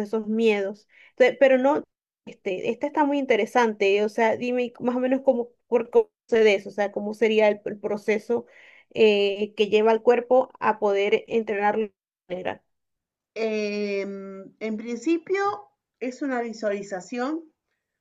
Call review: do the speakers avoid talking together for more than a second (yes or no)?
yes